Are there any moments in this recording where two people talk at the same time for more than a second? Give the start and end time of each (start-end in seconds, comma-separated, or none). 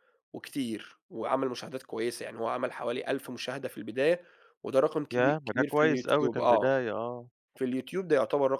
5.1-6.7